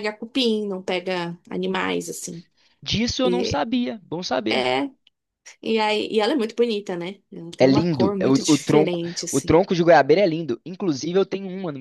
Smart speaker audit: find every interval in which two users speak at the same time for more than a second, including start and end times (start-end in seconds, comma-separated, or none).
7.6-9.6